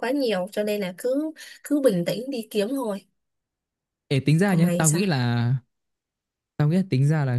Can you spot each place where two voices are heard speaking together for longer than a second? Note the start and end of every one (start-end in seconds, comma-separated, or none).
none